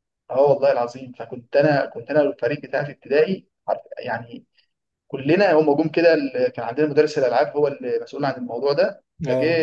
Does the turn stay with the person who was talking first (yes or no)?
yes